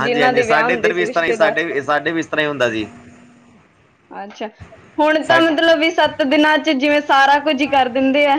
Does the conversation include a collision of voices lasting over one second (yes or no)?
no